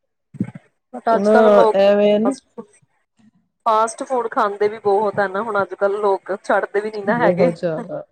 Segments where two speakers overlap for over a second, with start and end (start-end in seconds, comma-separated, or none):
none